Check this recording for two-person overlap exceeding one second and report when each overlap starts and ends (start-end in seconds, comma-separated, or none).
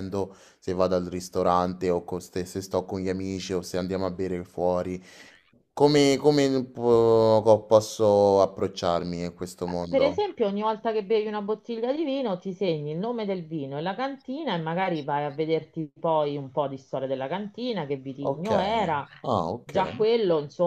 none